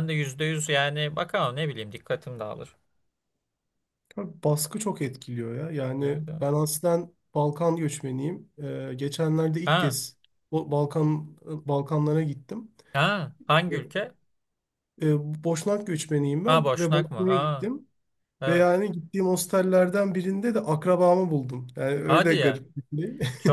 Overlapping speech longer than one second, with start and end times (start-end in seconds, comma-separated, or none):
16.5-17.7